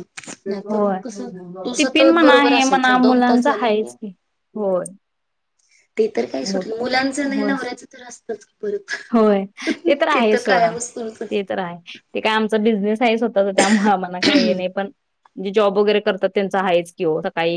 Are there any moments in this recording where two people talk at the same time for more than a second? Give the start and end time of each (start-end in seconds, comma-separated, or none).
1.8-3.9